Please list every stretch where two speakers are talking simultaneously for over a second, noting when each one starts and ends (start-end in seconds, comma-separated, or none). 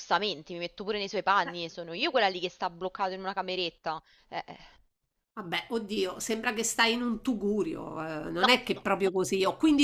none